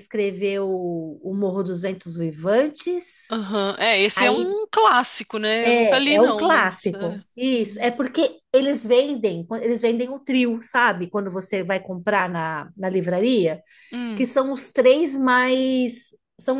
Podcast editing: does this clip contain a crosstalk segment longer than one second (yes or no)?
yes